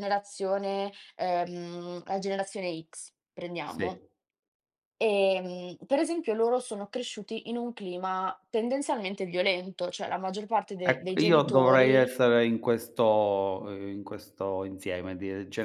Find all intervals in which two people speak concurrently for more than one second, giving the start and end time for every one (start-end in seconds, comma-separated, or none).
10.9-12.1